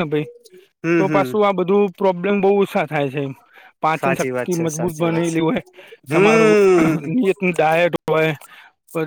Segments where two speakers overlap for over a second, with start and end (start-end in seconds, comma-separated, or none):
4.0-5.4